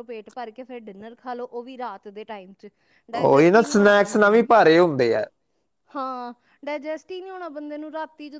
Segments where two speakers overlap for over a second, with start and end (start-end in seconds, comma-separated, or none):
3.1-4.4